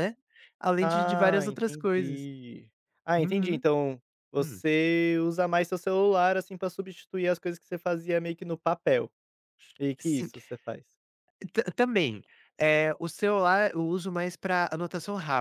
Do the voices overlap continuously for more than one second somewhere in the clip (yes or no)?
yes